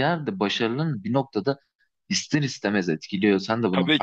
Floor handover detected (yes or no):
yes